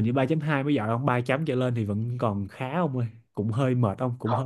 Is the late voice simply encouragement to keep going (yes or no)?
yes